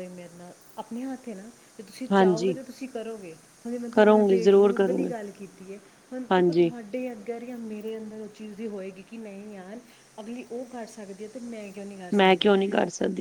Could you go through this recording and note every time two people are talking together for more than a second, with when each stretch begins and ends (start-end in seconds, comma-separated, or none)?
3.9-5.1